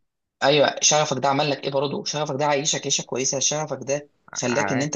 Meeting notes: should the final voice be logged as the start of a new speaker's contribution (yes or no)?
no